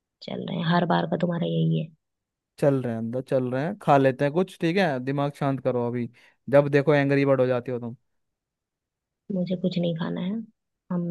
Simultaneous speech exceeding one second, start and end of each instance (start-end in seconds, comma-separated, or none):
none